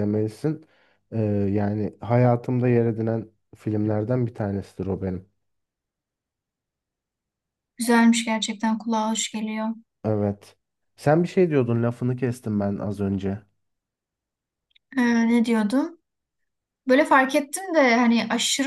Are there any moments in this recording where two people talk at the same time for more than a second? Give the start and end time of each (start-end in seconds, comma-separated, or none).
none